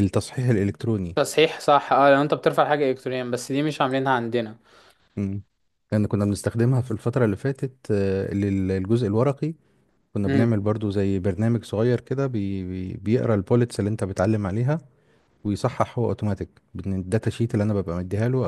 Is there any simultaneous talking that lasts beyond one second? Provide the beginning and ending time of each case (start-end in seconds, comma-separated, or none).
none